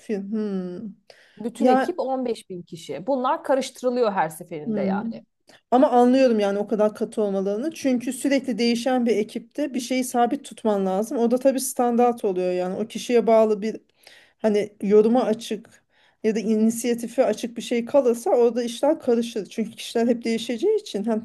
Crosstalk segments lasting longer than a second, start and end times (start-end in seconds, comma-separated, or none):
none